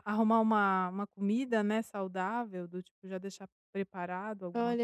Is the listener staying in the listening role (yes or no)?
no